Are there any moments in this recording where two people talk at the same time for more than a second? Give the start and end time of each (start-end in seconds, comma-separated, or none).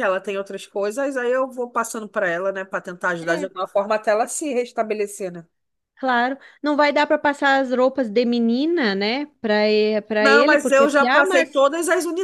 10.2-11.6